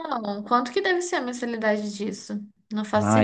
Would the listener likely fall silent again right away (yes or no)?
no